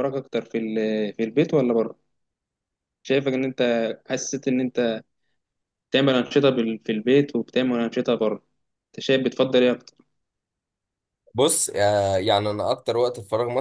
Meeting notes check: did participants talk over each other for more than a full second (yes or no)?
no